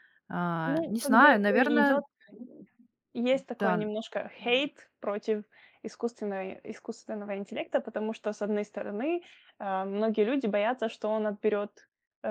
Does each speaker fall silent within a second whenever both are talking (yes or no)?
no